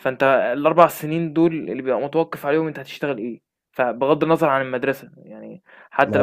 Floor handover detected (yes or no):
no